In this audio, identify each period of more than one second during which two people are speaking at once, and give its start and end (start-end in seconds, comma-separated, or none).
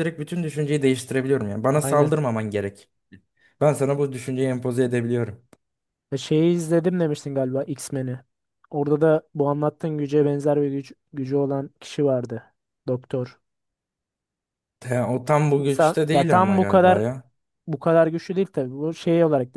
15.6-17.0